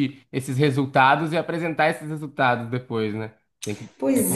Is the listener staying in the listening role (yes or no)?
no